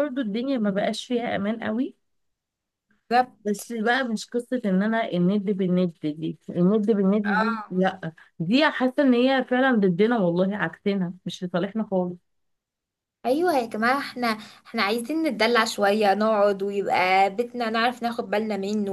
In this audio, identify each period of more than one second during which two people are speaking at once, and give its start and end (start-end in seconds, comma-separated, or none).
none